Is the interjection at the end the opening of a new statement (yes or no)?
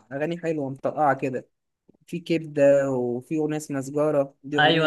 yes